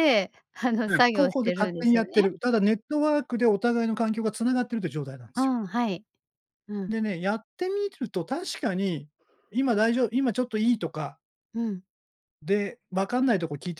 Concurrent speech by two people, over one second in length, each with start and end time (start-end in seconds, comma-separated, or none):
0.9-2.3